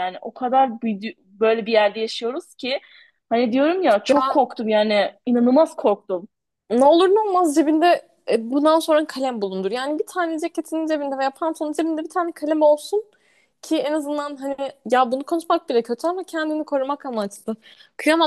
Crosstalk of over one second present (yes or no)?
no